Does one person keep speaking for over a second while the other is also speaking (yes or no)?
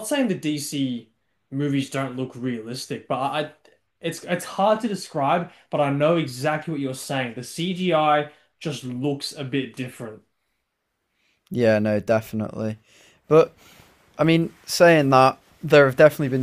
no